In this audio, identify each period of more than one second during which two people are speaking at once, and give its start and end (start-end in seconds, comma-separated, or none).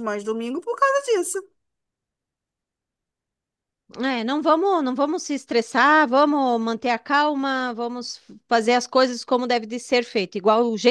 none